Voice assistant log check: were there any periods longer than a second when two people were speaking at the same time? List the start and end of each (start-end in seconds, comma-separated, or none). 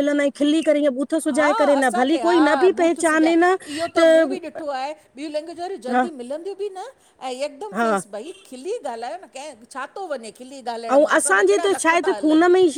1.3-3.3